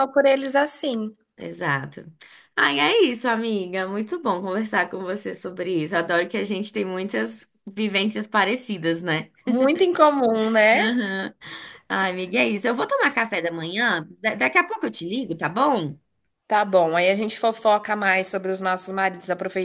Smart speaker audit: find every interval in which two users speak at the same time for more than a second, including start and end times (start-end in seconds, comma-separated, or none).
none